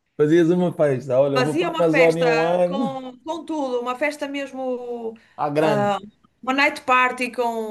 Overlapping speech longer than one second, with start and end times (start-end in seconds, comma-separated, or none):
1.4-3.0